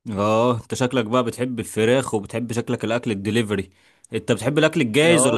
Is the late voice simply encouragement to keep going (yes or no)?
yes